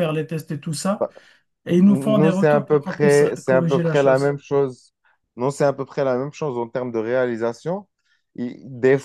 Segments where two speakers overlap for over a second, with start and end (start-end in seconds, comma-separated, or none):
1.8-4.4